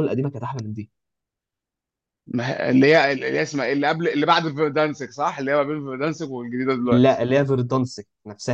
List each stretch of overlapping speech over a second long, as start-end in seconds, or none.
none